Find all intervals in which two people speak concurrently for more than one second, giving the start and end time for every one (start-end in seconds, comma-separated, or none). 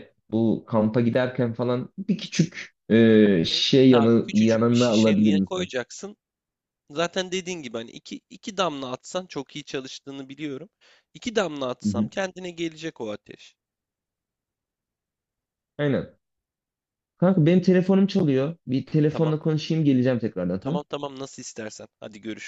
3.5-5.7